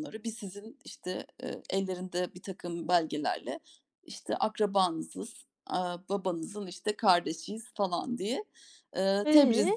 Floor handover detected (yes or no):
no